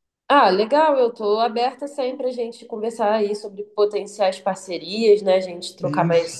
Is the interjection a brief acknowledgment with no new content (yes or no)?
yes